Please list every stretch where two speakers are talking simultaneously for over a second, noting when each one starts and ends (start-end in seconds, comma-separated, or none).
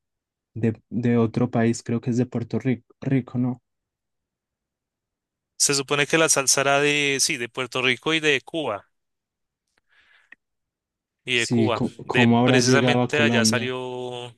11.3-13.7